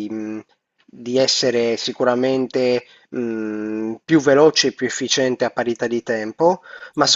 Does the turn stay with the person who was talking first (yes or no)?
yes